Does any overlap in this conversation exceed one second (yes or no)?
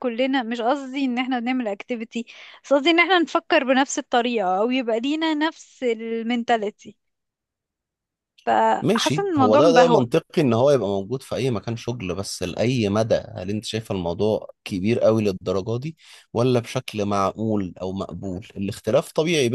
yes